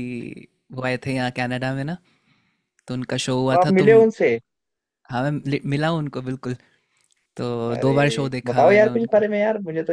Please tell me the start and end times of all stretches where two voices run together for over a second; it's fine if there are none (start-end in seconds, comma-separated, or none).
7.8-9.2